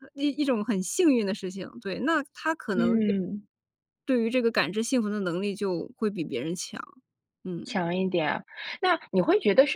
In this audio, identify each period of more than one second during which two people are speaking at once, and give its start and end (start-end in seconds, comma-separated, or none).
none